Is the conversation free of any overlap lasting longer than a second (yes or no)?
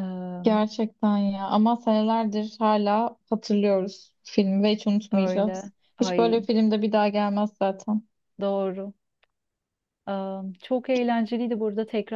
no